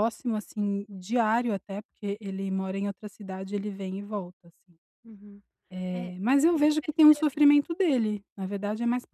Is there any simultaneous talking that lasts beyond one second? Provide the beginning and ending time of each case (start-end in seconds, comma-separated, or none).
5.9-7.4